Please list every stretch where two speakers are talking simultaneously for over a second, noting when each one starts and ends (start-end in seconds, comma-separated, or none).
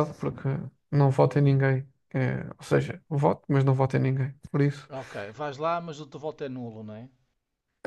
none